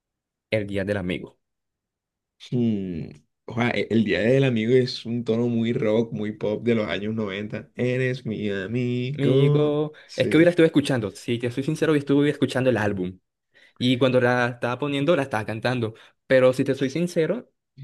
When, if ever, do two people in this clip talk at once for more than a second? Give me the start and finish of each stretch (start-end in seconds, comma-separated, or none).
9.2-10.6